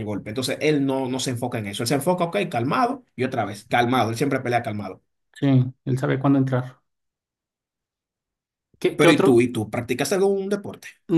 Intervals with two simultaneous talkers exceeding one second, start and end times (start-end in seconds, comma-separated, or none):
none